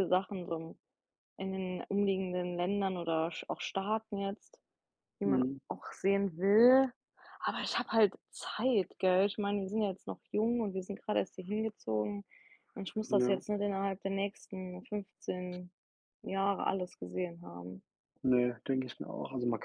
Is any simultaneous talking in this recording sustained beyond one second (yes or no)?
no